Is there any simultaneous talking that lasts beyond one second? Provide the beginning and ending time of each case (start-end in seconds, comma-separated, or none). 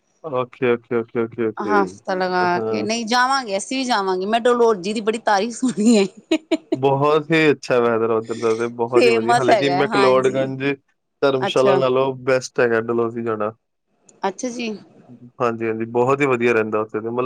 8.9-10.5